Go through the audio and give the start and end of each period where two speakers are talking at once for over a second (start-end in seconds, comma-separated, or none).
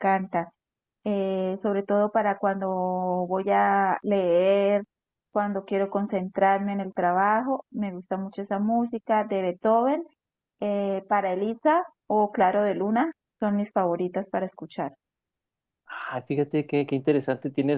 none